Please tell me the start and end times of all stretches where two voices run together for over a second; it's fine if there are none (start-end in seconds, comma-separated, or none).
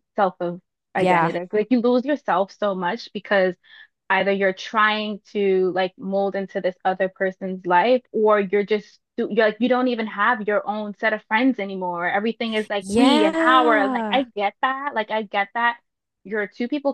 12.8-14.2